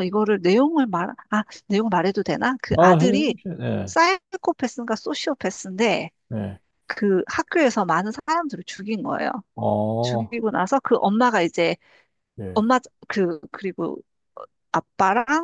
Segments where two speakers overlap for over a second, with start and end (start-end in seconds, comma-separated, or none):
none